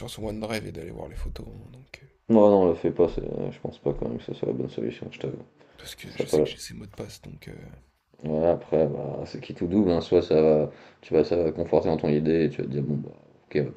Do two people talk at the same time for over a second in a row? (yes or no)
no